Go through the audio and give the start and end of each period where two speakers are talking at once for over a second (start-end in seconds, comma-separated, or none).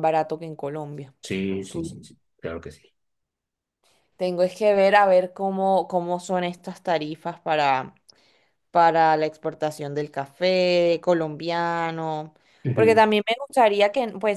none